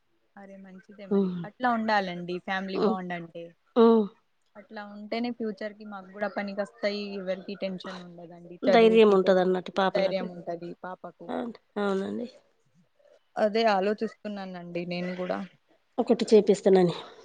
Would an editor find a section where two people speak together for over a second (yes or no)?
yes